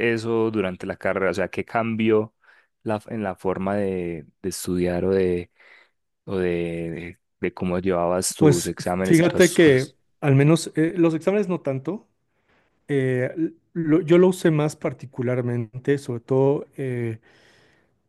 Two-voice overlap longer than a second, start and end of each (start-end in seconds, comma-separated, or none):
8.4-10.0